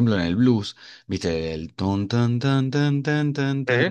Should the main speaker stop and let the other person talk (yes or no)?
no